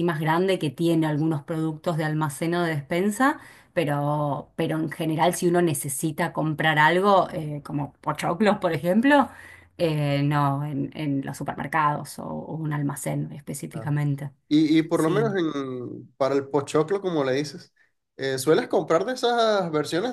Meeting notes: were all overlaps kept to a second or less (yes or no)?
yes